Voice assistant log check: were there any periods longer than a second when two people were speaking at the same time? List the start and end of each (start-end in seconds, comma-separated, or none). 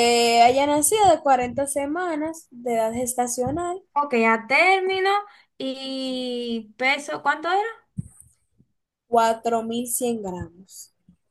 none